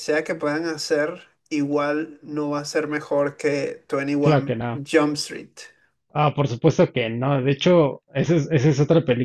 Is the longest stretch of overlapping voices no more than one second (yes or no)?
yes